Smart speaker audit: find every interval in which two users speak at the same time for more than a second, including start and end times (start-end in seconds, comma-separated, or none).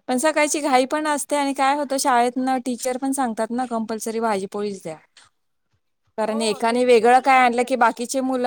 6.3-7.8